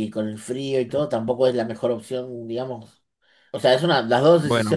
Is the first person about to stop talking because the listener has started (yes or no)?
yes